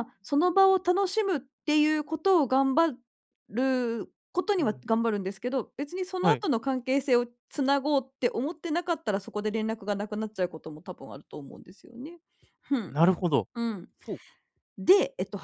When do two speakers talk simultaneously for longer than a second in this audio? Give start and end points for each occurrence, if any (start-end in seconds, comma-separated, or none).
none